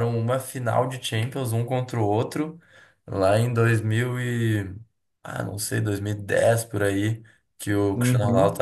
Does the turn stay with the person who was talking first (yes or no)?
yes